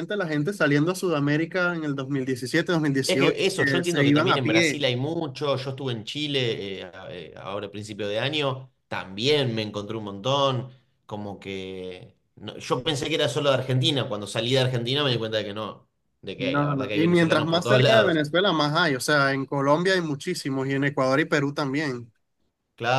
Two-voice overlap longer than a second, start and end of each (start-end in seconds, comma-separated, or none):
3.0-4.8, 16.4-18.2